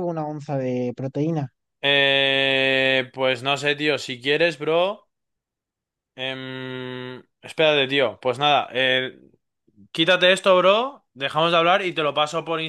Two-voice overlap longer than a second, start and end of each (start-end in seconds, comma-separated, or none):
none